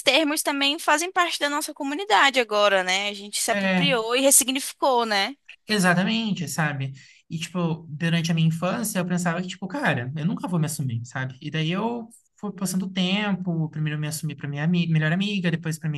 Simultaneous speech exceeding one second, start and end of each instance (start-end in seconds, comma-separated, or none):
none